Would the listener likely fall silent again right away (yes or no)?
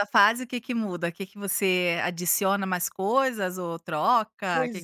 no